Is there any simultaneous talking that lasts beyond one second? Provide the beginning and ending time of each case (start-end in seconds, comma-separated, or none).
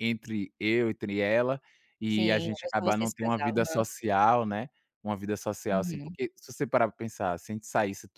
2.1-3.8